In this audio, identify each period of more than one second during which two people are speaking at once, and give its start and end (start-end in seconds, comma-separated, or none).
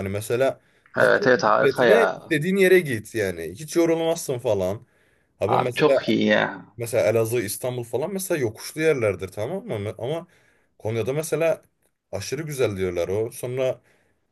1.0-2.3